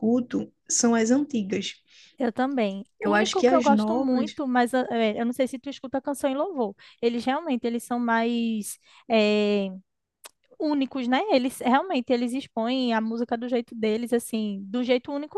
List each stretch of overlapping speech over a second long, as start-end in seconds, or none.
3.0-4.3